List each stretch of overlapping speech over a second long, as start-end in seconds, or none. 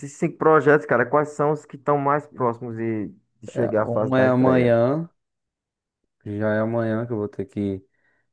3.5-4.8